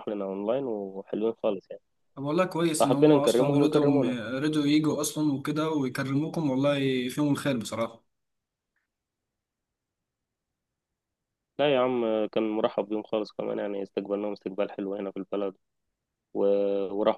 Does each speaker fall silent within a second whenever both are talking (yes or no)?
no